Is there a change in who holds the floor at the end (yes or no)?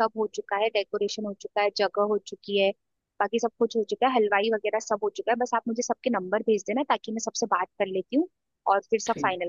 yes